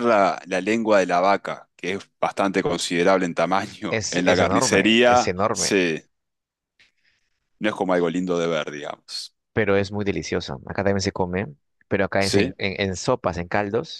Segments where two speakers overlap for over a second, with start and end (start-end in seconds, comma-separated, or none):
3.9-5.7